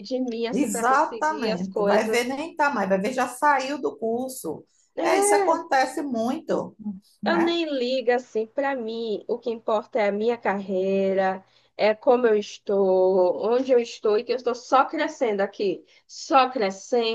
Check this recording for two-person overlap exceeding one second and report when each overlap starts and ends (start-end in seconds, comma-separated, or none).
0.5-2.3